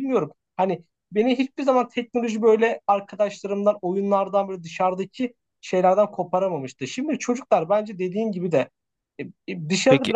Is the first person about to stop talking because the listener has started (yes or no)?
no